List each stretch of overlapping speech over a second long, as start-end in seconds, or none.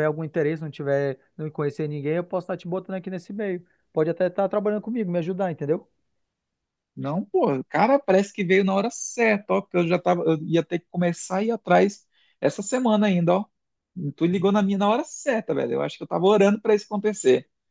none